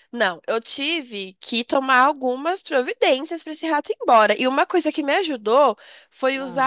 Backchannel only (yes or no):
yes